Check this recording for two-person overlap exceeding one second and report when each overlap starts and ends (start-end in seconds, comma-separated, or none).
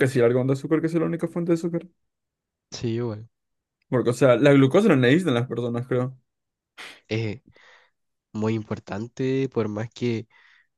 none